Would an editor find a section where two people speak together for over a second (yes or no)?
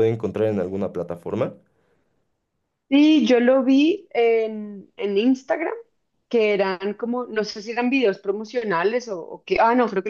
no